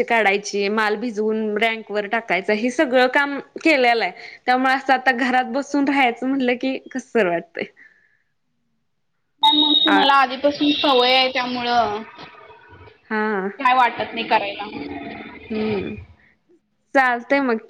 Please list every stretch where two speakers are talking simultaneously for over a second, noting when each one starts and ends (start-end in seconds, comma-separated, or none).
none